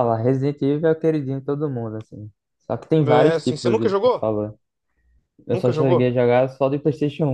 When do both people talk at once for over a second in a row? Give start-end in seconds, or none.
3.0-4.2